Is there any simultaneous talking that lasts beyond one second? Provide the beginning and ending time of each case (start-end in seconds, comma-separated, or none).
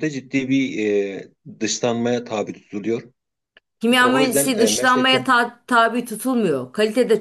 3.9-5.2